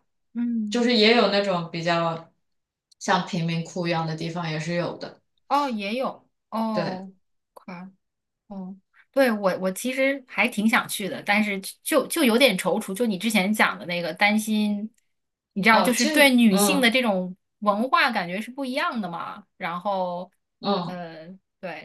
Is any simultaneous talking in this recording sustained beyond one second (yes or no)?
yes